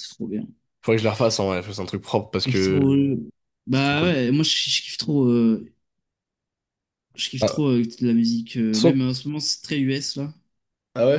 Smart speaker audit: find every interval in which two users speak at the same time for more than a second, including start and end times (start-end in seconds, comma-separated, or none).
none